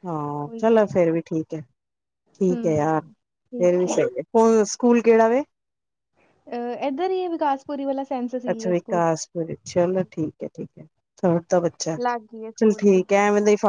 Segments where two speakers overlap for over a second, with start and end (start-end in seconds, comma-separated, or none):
2.5-3.9